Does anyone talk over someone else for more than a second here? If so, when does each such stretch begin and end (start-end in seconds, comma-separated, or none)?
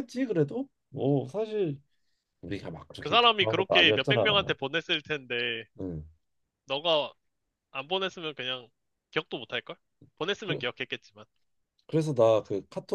3.0-4.5